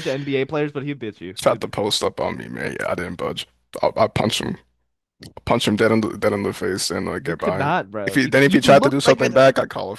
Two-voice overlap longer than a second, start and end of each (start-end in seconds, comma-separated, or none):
7.2-9.4